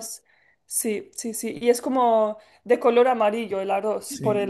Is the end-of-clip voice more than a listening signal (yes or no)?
yes